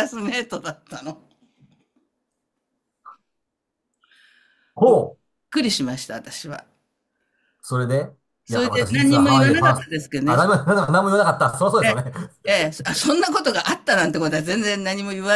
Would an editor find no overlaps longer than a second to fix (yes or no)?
no